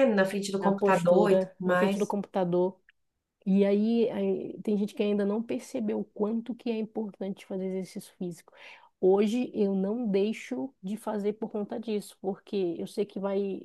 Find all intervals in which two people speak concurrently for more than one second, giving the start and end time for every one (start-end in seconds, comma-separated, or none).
0.6-2.1